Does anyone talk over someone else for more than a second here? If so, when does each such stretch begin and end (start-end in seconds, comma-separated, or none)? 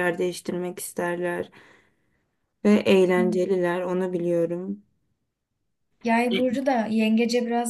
none